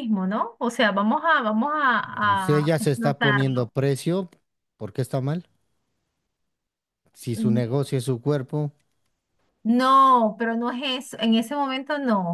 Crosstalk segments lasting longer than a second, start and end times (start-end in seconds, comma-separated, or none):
2.4-3.7